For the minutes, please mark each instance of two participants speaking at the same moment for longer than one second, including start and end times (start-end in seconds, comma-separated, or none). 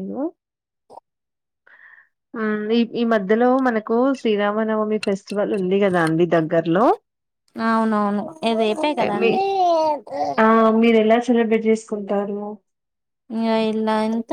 none